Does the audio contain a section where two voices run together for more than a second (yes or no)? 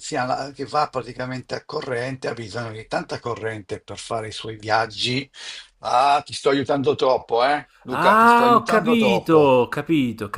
yes